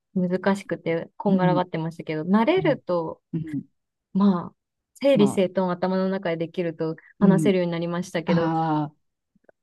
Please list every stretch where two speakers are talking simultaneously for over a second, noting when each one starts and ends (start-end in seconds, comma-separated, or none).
none